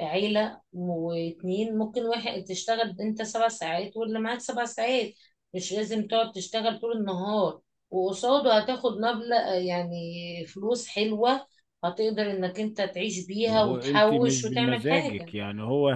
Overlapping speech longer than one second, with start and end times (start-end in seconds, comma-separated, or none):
13.4-15.3